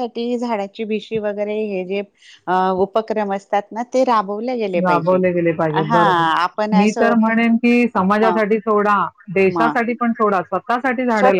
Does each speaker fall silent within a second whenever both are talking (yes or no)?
yes